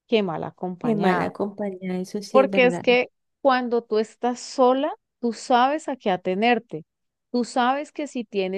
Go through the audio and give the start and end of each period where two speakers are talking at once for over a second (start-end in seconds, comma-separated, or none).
none